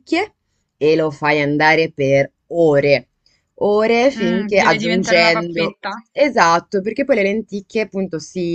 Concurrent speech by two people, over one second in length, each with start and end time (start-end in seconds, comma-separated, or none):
4.2-5.8